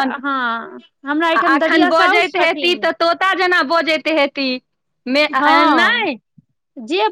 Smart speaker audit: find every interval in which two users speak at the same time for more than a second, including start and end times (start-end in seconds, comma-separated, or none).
1.4-2.9